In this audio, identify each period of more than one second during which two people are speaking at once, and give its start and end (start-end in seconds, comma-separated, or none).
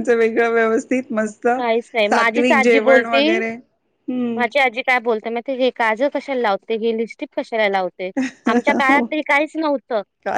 2.1-3.4